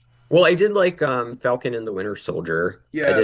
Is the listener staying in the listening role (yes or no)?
no